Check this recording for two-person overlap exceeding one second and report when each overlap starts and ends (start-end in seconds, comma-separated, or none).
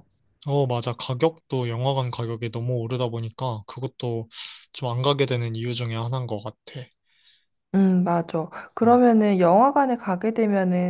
none